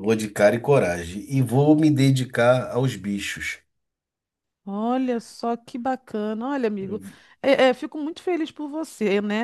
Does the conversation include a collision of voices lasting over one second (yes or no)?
no